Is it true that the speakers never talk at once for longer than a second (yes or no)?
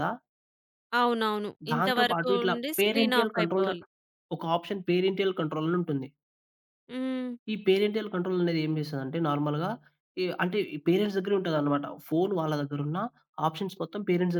no